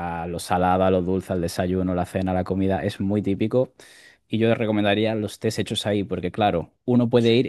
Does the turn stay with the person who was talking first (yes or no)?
yes